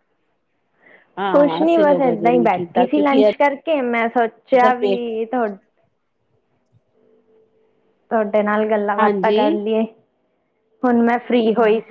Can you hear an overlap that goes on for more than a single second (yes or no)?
yes